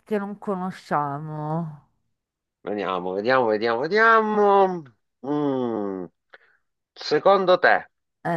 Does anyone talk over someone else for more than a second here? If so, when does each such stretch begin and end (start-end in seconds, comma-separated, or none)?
none